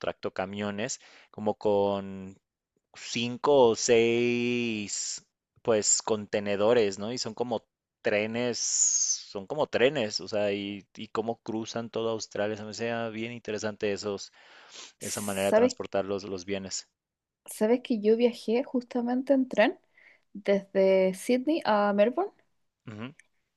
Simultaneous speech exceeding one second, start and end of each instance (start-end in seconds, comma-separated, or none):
none